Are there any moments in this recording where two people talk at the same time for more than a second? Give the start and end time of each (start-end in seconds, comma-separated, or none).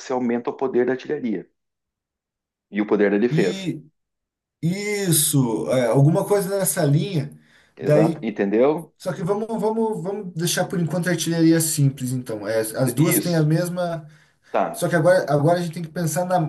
none